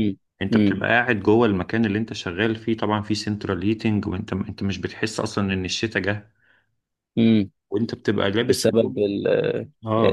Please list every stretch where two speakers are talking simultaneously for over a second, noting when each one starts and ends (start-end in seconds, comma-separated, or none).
none